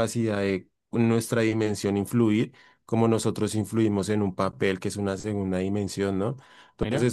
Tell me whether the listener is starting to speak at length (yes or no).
no